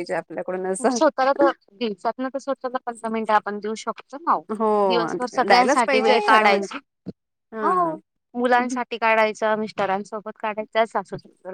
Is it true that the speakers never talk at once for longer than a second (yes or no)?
no